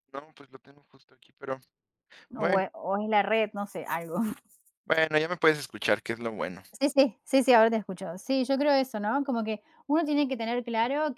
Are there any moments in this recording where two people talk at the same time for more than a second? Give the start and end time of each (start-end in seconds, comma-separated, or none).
none